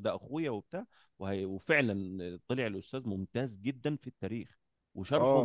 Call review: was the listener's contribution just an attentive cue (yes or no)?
no